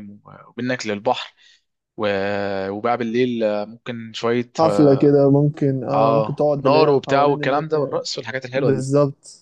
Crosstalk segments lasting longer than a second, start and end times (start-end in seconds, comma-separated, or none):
5.9-7.9